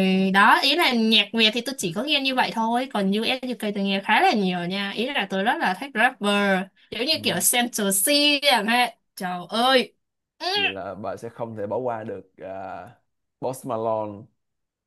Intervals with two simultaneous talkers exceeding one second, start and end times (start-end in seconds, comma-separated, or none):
none